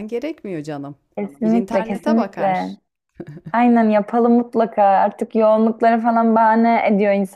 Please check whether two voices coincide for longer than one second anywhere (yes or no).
yes